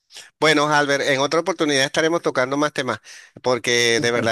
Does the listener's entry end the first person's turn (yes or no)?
no